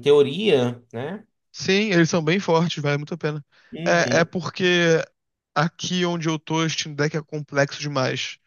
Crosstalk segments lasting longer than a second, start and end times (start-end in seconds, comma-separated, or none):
none